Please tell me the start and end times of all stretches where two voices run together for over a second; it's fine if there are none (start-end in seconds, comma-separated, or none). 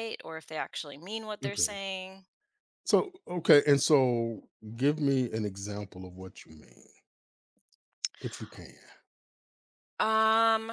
none